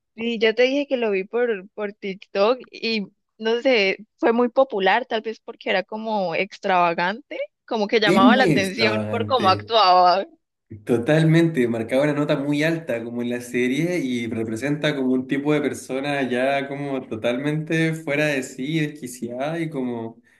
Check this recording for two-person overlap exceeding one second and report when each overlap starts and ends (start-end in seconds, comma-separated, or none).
8.1-9.7